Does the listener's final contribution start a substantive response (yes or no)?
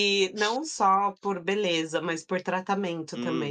yes